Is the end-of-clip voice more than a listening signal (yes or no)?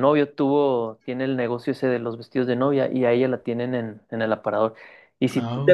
no